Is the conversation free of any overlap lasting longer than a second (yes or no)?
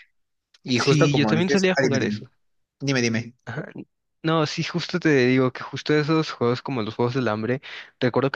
no